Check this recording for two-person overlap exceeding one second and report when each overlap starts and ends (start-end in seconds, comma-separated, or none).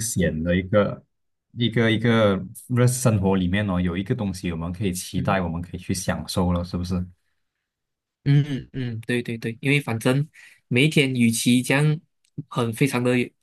none